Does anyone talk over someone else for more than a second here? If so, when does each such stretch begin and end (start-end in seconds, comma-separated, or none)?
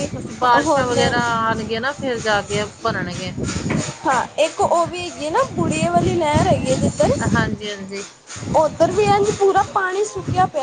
none